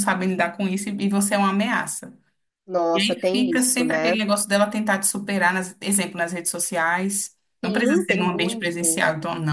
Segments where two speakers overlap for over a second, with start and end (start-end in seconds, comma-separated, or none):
2.9-4.2, 7.6-9.0